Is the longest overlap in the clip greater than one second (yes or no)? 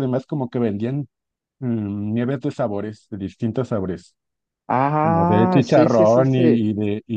yes